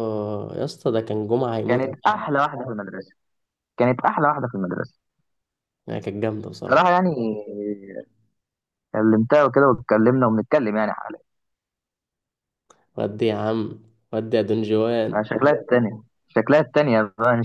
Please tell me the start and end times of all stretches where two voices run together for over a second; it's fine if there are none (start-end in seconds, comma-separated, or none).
none